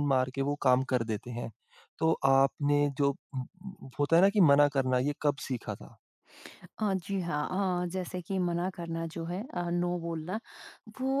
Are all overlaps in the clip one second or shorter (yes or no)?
yes